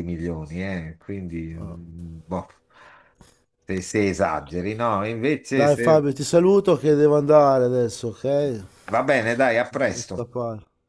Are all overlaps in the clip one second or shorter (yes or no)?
yes